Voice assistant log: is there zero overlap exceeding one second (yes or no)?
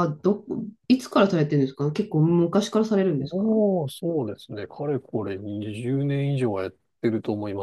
yes